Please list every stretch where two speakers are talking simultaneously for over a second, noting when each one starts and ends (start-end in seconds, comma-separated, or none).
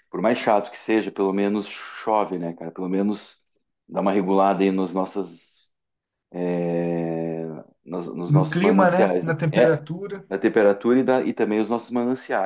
8.3-9.8